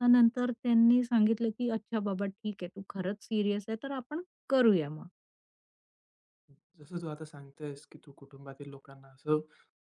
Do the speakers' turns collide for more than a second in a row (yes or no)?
no